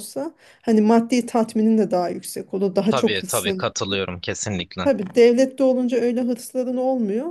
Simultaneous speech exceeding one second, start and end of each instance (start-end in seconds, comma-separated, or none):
none